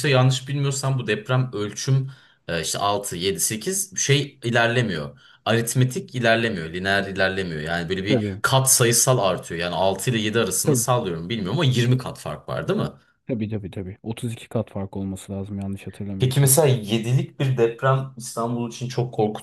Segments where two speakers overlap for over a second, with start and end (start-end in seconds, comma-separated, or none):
none